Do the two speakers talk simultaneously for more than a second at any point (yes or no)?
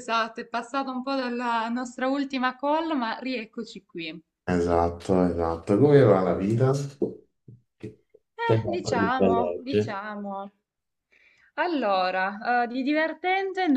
yes